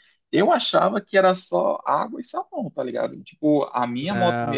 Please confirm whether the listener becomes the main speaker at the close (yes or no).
no